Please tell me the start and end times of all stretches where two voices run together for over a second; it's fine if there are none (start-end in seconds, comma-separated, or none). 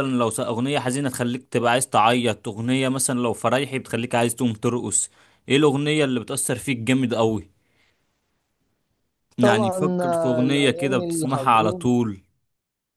9.4-11.9